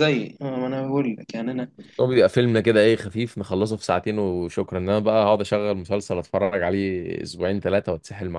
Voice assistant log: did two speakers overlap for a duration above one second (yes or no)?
no